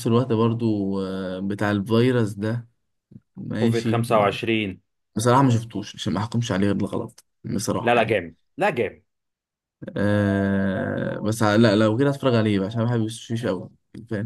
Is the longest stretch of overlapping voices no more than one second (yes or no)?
yes